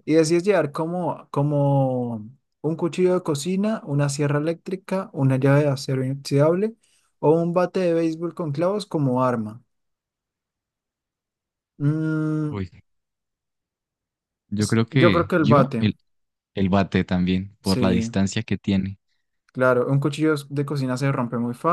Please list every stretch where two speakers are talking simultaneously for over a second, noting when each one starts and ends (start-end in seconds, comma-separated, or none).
14.6-15.9